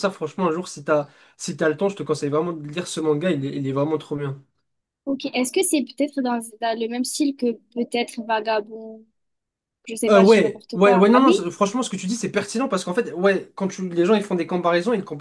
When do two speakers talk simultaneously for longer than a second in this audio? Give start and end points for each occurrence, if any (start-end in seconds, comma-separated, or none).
10.1-11.5